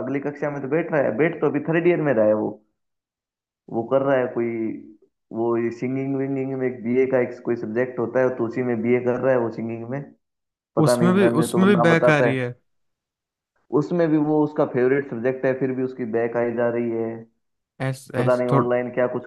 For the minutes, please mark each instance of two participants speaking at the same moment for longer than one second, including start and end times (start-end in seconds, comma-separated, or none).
10.8-12.5